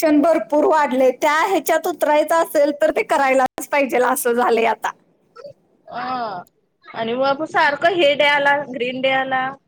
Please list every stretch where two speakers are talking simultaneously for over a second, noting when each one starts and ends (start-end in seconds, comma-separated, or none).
none